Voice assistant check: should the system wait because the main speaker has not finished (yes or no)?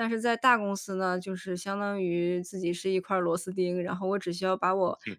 yes